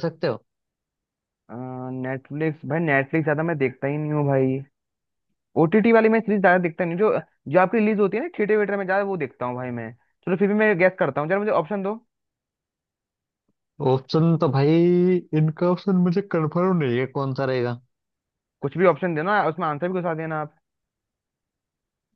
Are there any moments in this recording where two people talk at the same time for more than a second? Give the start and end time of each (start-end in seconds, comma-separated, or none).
none